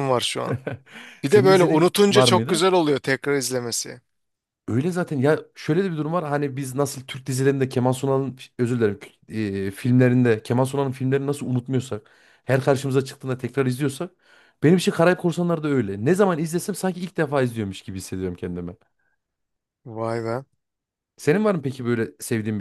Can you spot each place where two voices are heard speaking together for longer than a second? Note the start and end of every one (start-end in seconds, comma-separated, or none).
1.2-2.7